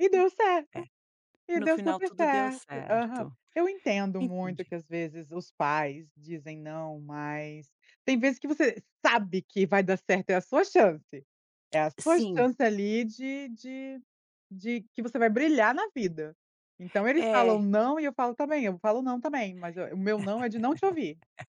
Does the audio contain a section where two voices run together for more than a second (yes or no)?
yes